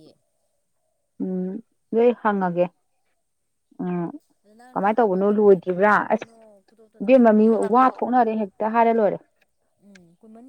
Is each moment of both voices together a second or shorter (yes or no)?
no